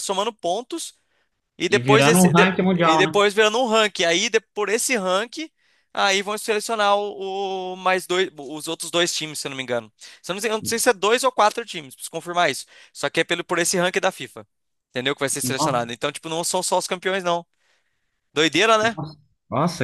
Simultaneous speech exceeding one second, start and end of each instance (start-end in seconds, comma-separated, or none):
1.7-3.2